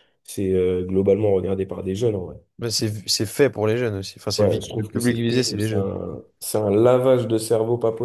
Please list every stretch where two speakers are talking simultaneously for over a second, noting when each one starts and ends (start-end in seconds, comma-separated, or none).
4.4-5.9